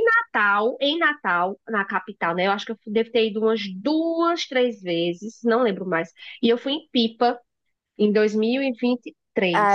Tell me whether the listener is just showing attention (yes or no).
no